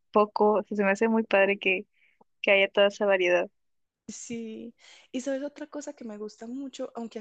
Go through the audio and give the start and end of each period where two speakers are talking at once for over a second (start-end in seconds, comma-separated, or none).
none